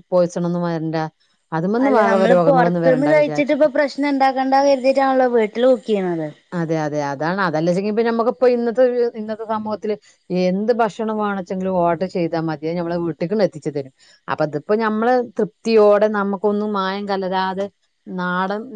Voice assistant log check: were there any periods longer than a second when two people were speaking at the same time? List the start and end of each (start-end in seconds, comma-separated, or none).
2.0-3.6